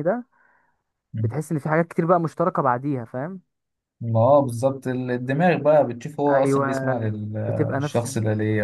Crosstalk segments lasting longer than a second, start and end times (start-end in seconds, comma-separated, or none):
6.3-8.1